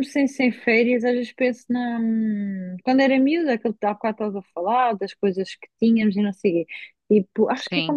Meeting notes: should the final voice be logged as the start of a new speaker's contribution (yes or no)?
no